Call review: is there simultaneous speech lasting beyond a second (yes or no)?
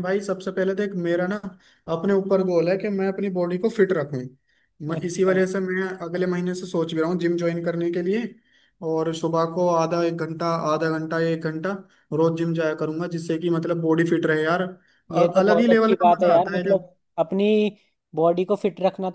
yes